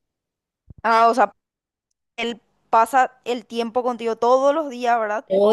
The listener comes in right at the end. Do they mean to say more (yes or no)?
yes